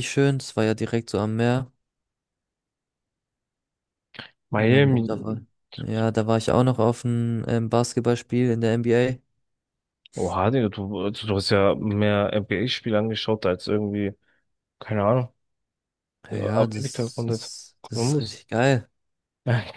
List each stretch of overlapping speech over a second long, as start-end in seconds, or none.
16.6-18.4